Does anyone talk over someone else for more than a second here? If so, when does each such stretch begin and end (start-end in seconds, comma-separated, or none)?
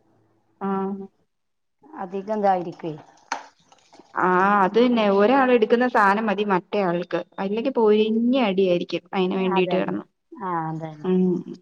none